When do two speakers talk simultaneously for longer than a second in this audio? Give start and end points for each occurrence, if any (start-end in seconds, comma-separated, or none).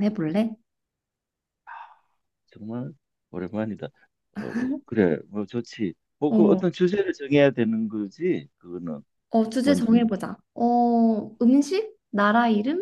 none